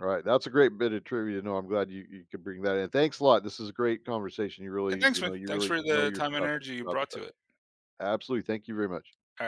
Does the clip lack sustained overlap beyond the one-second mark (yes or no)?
no